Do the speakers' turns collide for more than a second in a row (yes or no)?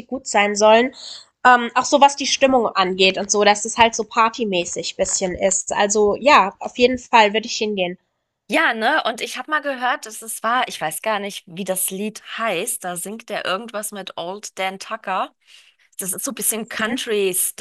no